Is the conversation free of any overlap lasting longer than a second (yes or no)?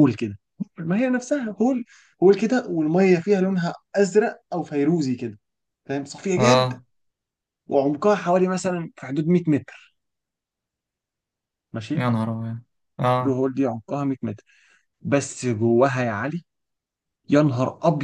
yes